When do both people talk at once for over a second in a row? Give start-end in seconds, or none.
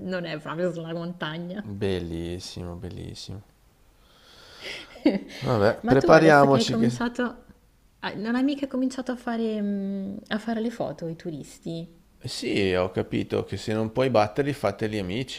5.8-7.0